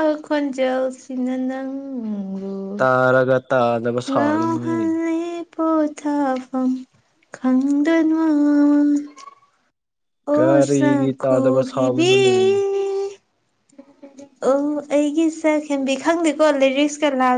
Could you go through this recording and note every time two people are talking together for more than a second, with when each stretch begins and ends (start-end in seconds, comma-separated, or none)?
10.3-12.1